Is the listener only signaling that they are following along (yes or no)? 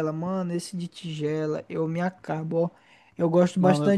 yes